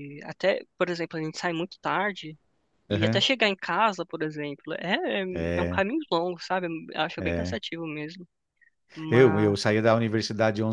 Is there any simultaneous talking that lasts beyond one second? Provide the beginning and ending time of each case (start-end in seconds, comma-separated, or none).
none